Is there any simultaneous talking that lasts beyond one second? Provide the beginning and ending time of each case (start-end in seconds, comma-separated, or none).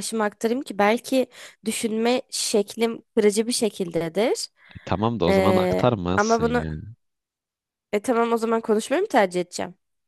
5.3-6.6